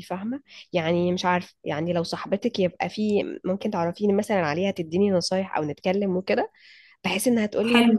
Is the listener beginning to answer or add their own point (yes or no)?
no